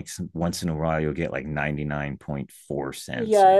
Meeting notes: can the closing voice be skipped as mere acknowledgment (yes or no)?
no